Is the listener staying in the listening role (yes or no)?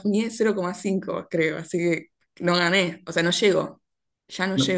no